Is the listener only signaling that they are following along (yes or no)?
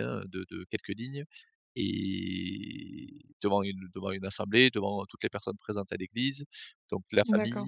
yes